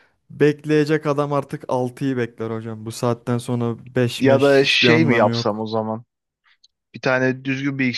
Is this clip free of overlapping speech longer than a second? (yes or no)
no